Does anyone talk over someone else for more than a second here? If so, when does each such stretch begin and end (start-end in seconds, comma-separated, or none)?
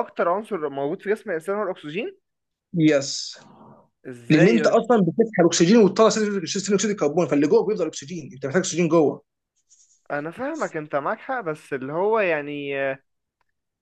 none